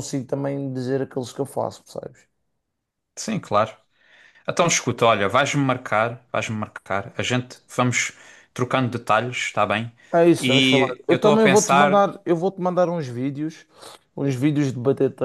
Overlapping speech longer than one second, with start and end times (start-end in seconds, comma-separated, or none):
10.4-12.0